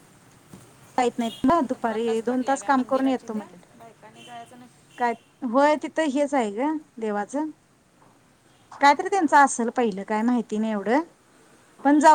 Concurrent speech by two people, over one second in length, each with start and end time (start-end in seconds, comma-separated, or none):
1.4-3.6